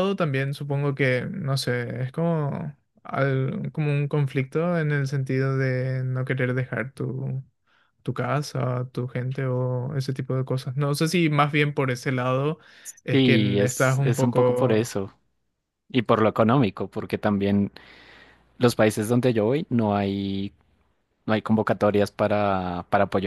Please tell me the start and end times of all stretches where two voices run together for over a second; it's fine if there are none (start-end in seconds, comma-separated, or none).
13.1-15.0